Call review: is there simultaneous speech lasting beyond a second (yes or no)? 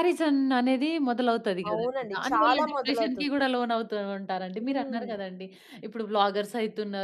yes